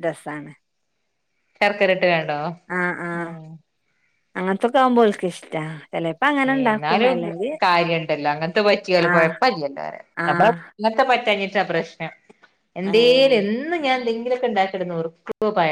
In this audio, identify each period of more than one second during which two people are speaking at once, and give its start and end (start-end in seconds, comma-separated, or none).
none